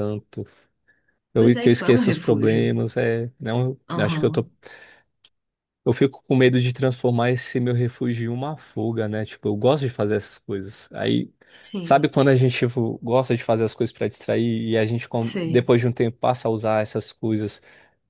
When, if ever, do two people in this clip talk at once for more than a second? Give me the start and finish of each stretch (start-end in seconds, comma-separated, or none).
1.4-2.7